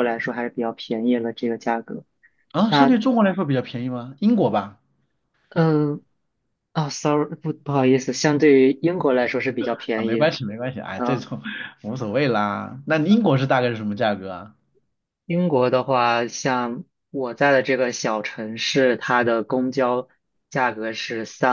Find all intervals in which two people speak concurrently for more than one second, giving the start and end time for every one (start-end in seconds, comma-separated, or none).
none